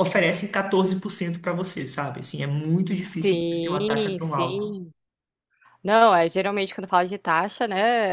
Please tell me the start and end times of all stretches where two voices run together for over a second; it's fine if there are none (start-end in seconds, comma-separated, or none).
3.0-4.6